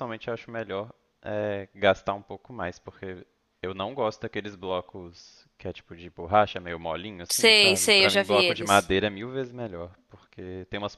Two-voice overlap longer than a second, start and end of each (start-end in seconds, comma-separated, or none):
7.3-8.9